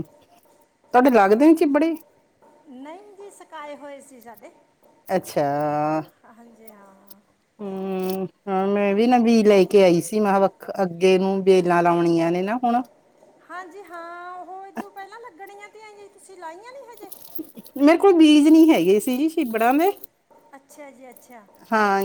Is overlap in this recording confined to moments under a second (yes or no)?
yes